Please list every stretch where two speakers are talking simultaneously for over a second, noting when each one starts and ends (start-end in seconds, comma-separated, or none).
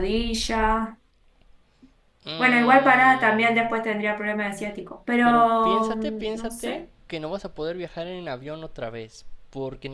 2.4-3.7, 5.2-6.9